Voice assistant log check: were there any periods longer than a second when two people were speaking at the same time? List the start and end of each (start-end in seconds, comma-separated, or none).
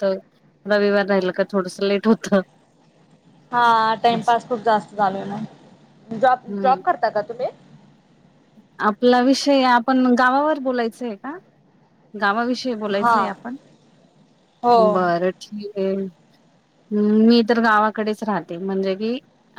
none